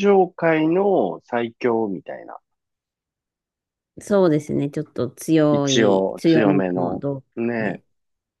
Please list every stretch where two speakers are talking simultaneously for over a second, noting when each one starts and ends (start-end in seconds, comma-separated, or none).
5.5-7.8